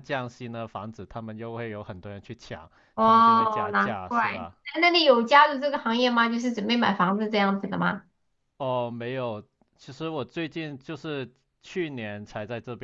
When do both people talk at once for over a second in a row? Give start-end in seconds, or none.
2.9-4.6